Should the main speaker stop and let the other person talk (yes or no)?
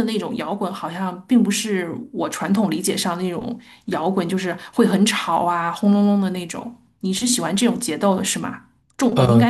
no